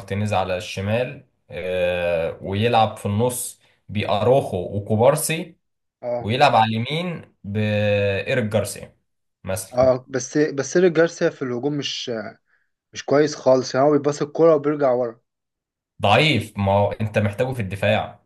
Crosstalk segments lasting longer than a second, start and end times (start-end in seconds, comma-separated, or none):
none